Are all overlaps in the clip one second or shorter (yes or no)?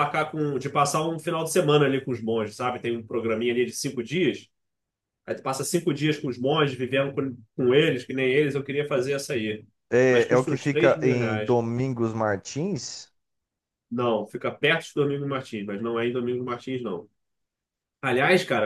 no